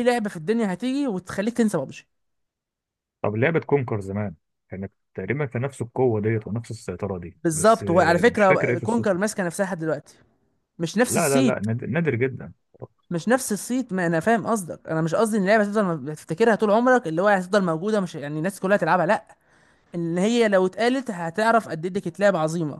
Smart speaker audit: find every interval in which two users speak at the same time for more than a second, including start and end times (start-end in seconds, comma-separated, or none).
7.4-9.2